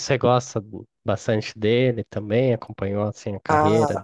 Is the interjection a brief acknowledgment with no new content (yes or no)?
no